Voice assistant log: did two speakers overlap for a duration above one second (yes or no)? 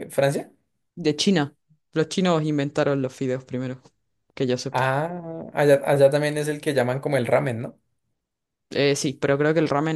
no